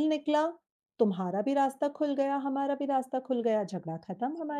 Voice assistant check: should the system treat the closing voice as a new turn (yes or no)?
yes